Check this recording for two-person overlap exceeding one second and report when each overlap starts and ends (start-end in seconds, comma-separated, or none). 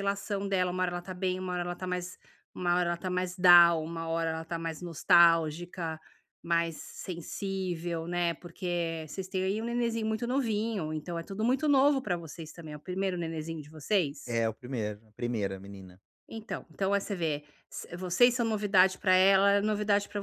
none